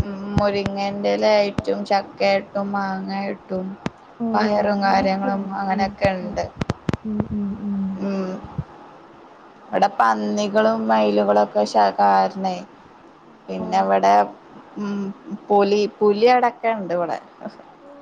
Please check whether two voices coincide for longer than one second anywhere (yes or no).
yes